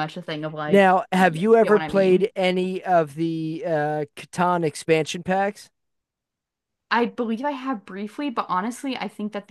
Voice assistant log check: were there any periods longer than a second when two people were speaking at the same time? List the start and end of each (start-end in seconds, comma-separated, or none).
0.7-2.3